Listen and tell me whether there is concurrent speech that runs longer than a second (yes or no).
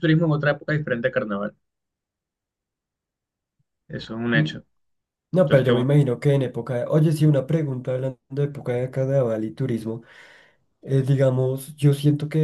no